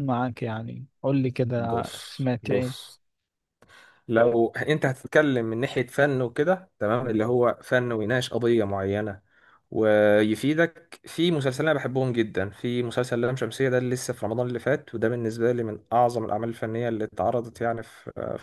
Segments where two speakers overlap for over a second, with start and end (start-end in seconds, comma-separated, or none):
1.6-2.9